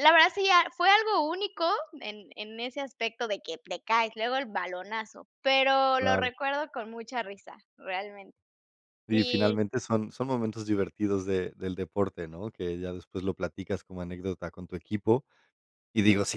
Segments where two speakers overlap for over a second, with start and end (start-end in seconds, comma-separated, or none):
none